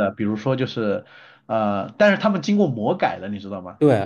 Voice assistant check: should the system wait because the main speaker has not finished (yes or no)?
no